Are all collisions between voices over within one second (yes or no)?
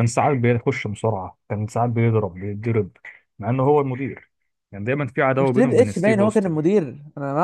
no